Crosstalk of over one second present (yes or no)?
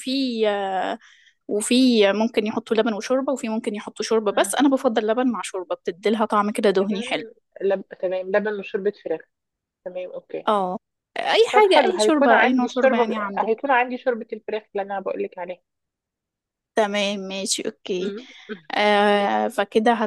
yes